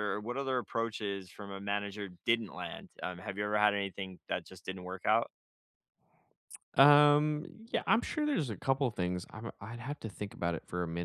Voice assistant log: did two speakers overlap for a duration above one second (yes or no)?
no